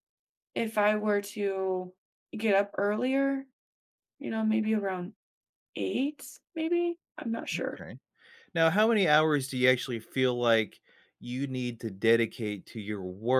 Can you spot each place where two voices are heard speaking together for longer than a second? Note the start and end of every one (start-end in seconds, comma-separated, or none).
none